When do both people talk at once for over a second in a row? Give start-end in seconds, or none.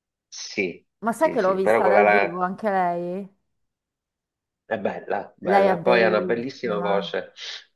1.0-2.4, 5.4-7.1